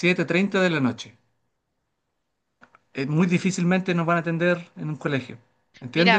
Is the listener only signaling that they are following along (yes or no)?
yes